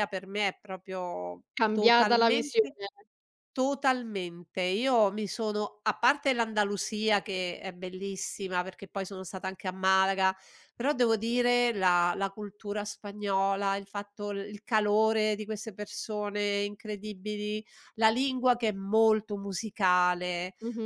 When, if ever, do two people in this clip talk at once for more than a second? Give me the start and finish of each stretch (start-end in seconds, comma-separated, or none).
1.5-2.8